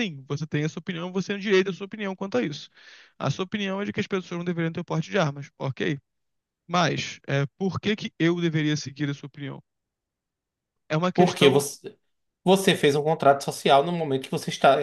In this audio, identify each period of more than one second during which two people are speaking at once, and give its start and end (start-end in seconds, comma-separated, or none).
none